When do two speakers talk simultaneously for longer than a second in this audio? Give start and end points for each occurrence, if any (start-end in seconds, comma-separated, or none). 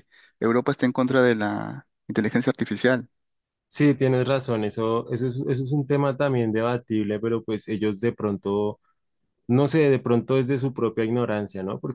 none